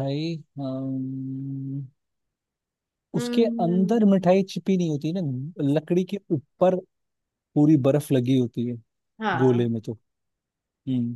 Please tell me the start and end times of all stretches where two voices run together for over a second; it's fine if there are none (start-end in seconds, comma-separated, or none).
3.1-4.4